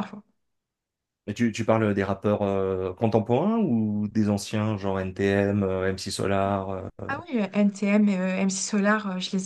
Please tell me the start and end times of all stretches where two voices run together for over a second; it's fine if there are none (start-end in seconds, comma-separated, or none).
none